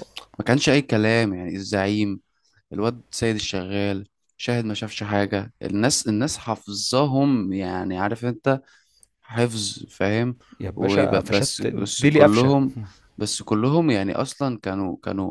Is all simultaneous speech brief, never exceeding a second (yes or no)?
no